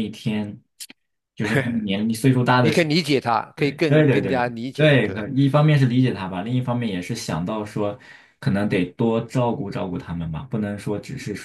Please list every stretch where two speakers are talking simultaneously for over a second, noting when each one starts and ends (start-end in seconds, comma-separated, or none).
3.6-5.3